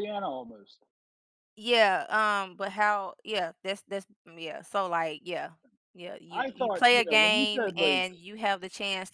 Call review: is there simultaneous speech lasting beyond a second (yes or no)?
yes